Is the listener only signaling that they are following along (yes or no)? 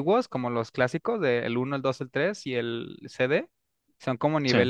yes